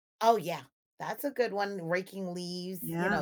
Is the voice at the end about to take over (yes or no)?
no